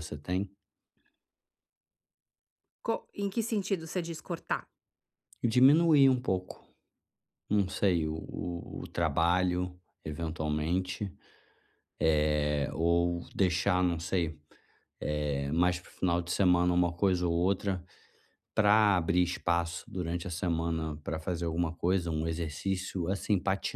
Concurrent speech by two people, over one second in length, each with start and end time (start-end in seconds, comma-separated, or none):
none